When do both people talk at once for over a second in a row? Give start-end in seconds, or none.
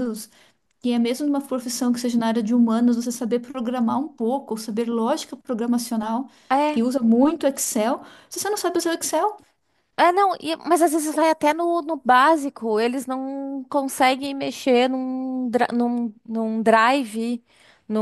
none